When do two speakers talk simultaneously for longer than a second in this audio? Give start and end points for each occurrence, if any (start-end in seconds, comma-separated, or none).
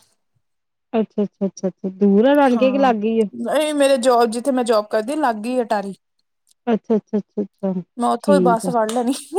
none